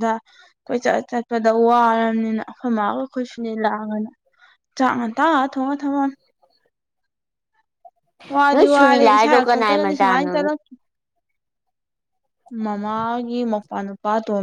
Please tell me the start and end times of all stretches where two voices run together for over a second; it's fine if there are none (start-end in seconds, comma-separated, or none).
8.5-10.3